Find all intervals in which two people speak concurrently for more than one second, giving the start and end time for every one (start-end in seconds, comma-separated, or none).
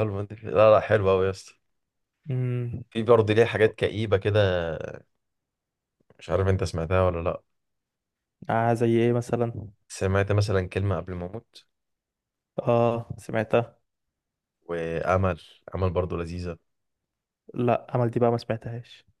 none